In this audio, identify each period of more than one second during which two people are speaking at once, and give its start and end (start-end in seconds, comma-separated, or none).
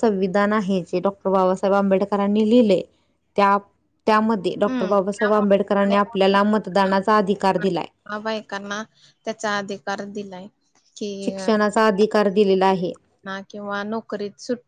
4.7-6.4